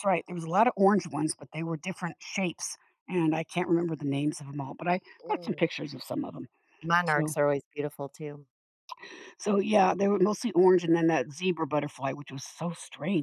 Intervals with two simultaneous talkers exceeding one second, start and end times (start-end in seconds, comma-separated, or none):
none